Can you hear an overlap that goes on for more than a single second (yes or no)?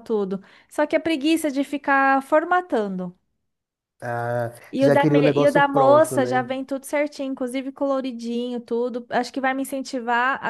yes